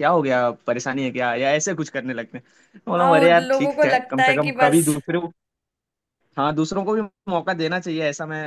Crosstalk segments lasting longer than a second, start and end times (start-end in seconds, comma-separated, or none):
3.0-4.9